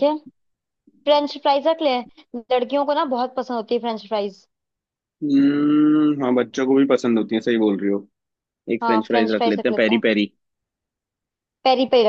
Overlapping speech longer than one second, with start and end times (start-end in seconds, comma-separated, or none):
8.8-10.1